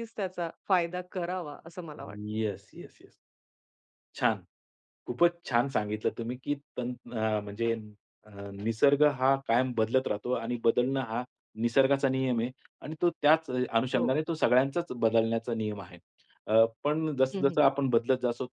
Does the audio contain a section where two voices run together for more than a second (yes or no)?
no